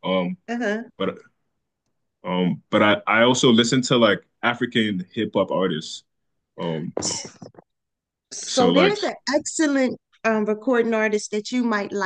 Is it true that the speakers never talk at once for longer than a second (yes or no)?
yes